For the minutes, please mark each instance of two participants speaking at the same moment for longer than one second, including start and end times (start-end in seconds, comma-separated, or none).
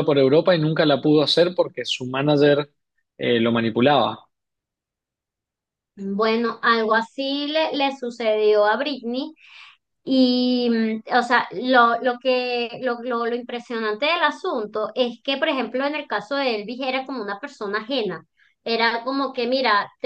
none